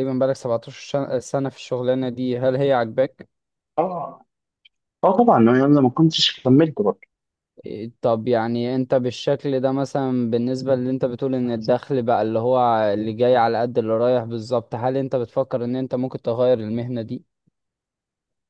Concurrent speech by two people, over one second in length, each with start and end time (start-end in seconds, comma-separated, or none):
none